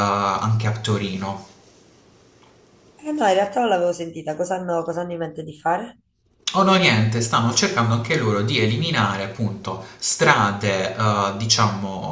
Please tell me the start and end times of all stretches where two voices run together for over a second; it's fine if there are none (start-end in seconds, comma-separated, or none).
none